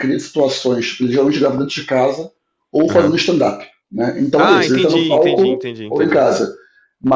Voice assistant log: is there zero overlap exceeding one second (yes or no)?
no